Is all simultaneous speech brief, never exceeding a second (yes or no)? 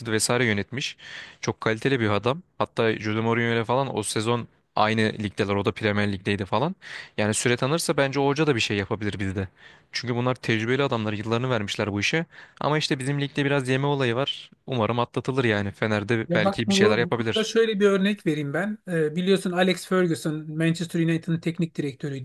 no